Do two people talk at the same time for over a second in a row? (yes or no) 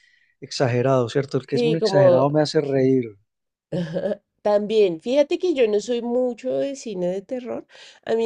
yes